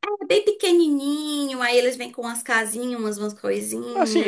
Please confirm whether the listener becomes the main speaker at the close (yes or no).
yes